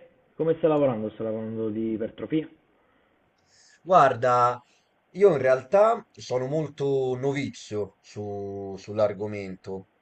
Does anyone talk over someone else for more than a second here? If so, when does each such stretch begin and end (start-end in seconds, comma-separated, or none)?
none